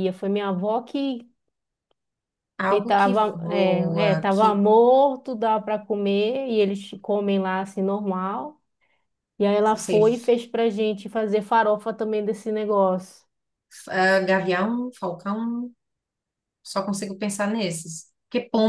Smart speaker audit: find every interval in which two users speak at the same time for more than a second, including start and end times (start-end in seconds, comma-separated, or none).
2.7-4.6